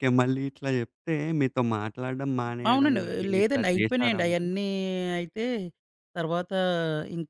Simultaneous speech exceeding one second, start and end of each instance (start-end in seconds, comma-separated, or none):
2.7-4.5